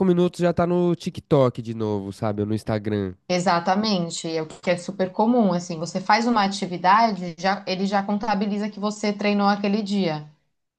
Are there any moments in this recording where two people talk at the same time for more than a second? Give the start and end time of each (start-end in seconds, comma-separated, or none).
none